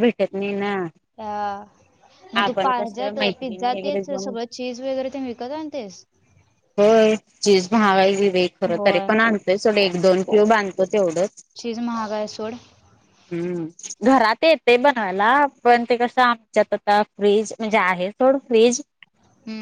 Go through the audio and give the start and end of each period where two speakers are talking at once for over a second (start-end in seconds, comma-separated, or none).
2.4-4.3